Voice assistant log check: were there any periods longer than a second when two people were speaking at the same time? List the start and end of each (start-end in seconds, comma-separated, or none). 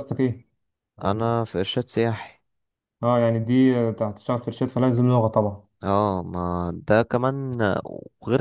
none